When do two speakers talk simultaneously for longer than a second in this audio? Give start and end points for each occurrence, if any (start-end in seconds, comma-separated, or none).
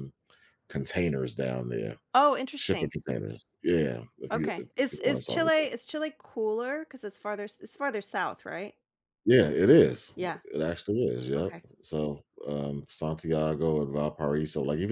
4.3-5.7